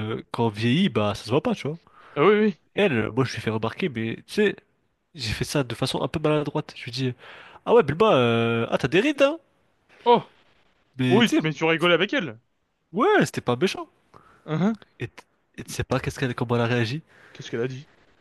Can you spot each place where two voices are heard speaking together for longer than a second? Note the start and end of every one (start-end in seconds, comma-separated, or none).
none